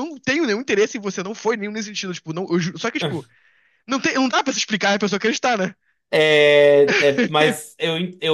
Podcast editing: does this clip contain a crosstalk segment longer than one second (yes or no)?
no